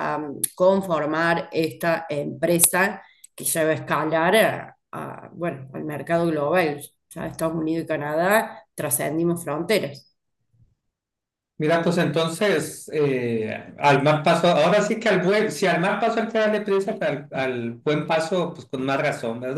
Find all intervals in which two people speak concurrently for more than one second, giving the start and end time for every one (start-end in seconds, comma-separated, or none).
none